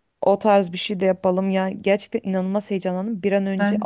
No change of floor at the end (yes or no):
yes